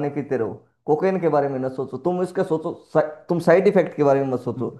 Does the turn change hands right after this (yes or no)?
yes